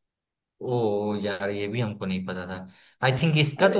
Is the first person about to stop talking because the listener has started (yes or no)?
no